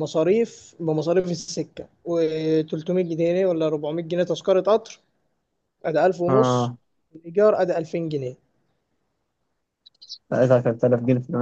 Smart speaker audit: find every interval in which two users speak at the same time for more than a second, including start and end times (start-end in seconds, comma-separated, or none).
none